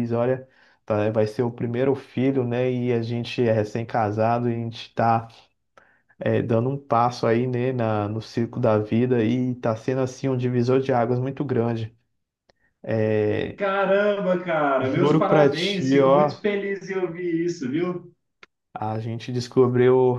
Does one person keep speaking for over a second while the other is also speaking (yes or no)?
yes